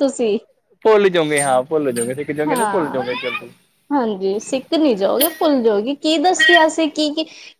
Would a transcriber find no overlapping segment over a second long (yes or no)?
yes